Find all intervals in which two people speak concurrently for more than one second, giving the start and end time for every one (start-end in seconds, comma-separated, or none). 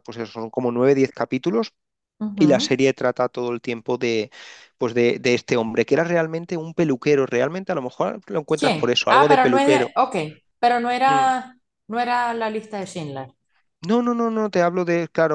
8.6-9.9